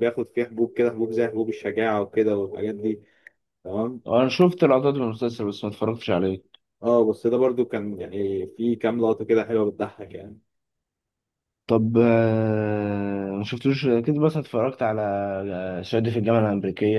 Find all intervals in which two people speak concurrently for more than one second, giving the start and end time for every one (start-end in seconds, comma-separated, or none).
none